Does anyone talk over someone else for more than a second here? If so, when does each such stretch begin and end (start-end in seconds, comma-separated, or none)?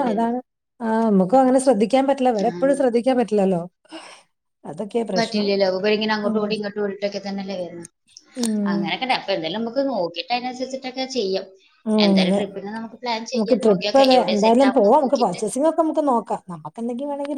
13.3-15.4